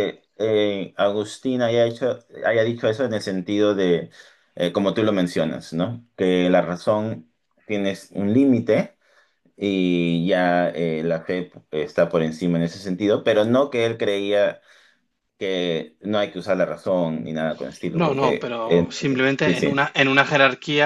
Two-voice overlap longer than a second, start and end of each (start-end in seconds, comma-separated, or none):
18.0-19.8